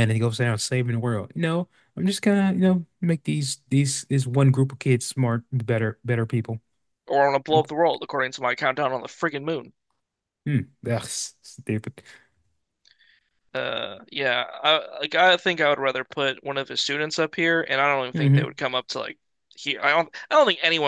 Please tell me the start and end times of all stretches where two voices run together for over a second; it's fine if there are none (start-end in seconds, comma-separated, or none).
none